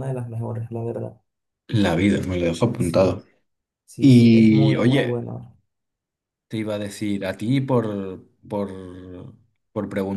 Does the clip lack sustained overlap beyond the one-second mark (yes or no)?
no